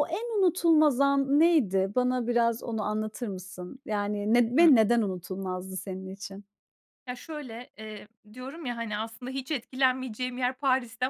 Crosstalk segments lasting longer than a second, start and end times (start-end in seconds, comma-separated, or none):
none